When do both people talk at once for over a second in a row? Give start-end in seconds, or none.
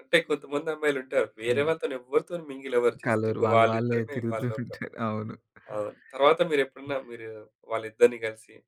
3.0-4.8